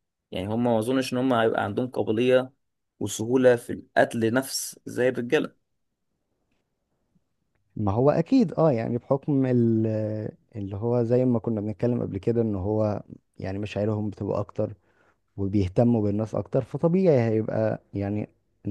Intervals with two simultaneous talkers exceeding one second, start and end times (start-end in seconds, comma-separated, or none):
none